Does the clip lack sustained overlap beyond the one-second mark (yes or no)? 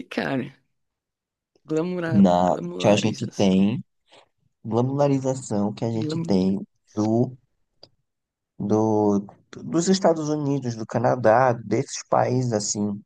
no